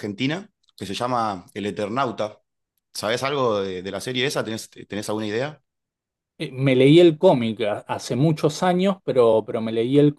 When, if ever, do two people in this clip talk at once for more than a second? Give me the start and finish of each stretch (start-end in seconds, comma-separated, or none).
none